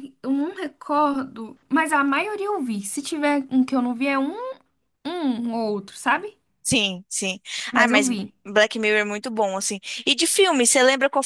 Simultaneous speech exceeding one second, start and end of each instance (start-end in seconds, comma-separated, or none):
none